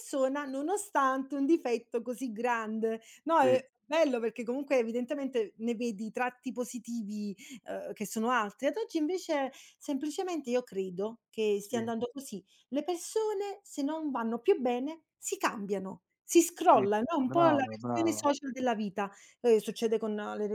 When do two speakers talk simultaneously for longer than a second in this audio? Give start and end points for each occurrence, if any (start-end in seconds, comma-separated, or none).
16.7-18.3